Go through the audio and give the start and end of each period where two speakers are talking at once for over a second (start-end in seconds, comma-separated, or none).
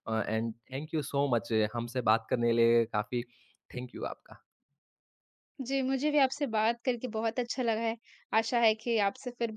none